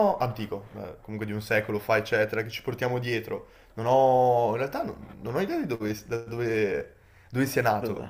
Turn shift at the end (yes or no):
no